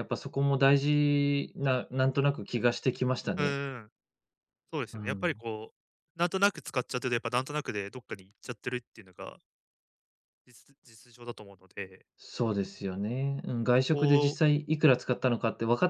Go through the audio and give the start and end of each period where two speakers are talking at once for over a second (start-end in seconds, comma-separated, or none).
none